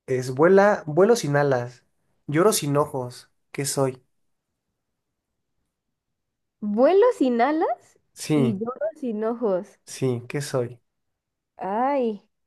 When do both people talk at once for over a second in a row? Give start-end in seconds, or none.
none